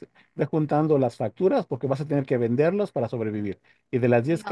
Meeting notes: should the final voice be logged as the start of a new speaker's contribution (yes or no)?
no